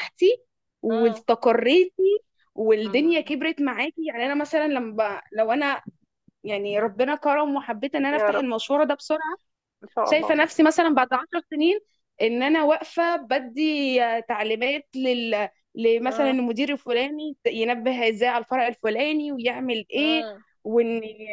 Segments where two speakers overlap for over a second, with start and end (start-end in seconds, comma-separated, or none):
none